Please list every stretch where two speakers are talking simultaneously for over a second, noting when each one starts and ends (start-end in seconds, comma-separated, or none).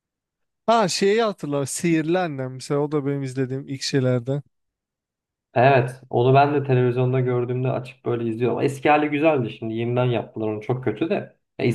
none